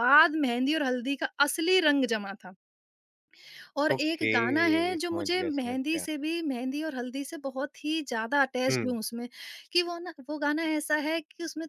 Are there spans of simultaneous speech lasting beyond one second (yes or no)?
yes